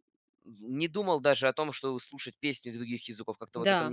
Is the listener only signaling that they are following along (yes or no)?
yes